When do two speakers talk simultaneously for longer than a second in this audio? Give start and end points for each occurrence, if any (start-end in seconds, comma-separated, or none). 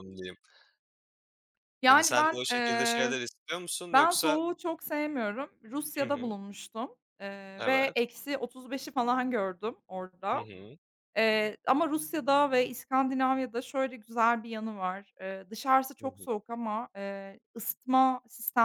1.9-3.2